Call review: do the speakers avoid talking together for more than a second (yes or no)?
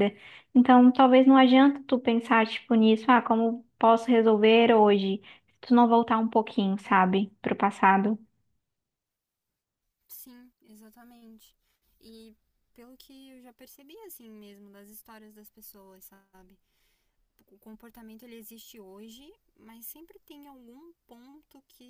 yes